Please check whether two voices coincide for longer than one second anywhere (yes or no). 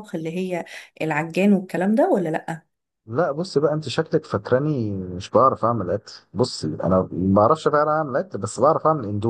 no